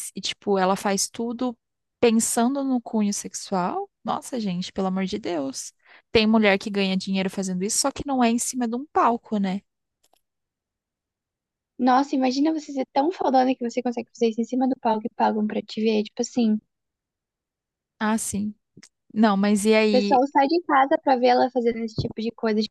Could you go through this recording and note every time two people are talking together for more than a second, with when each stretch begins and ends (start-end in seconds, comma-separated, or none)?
none